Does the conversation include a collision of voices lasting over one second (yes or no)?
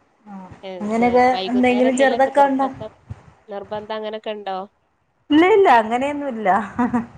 yes